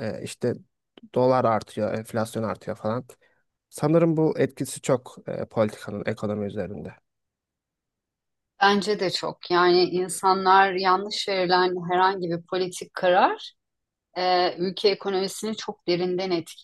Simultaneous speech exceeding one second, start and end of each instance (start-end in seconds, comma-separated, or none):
none